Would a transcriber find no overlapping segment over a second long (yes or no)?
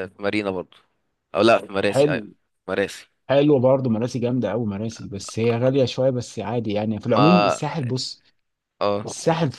yes